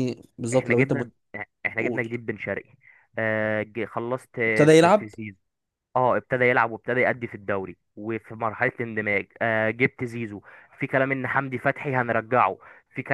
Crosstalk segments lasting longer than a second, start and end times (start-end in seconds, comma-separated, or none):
none